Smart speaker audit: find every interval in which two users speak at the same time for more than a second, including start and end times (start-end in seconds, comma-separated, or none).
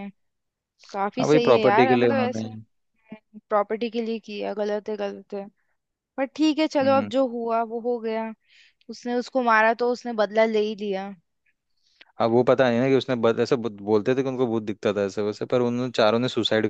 1.2-2.4